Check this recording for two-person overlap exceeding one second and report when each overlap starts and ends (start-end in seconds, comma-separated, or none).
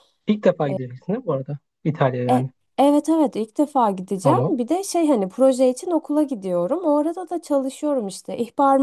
none